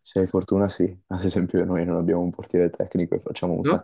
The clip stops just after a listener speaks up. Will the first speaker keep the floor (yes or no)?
yes